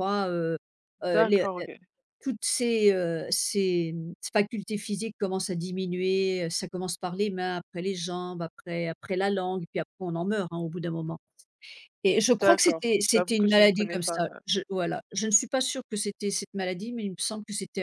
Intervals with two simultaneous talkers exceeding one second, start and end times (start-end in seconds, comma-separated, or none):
12.3-14.2